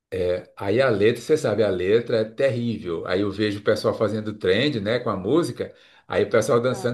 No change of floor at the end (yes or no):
yes